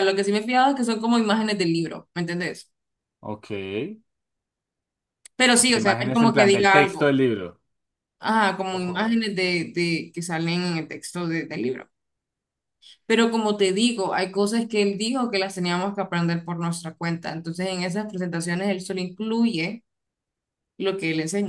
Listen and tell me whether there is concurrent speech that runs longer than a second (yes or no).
yes